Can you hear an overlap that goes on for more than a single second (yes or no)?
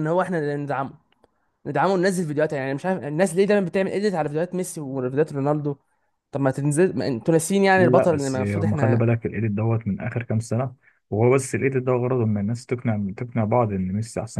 yes